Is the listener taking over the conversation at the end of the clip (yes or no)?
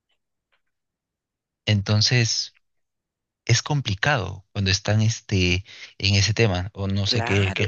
yes